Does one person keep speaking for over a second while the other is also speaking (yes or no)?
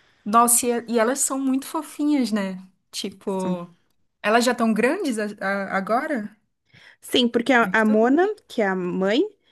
no